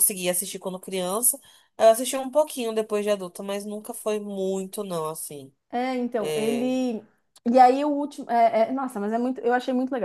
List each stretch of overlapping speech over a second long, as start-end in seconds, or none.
none